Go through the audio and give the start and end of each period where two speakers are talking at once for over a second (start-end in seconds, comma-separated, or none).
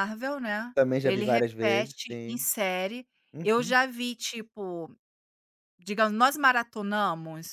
0.7-2.5